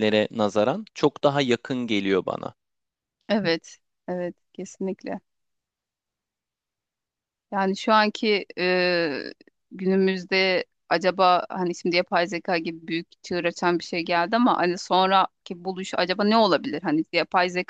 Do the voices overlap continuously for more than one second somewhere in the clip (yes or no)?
no